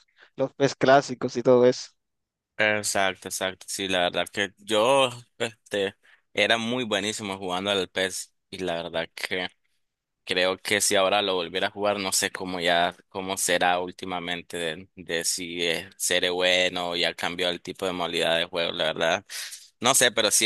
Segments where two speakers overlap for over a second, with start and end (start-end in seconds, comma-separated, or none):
none